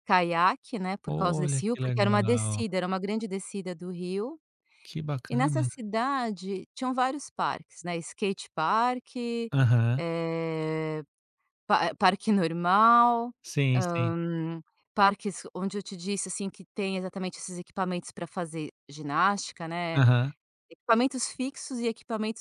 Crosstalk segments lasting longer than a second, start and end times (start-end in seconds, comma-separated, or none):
1.0-2.6